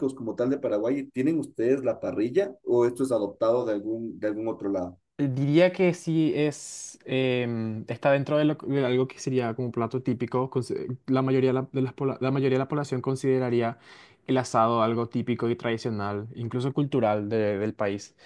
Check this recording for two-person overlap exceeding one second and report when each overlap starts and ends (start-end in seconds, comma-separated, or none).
none